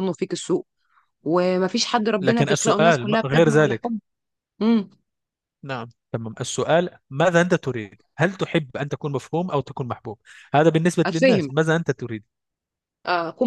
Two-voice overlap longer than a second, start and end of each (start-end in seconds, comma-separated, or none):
2.2-3.9